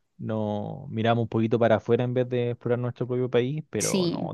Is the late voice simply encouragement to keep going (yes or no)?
yes